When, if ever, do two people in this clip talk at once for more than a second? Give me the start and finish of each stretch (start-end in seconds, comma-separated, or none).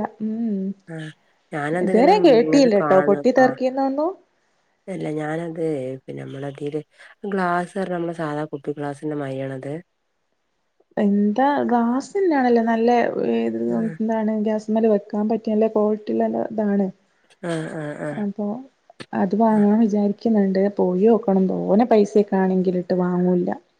1.9-3.6